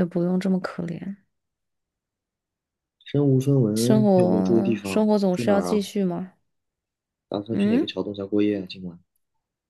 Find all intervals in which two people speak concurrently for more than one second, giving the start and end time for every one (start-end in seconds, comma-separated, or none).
3.8-5.9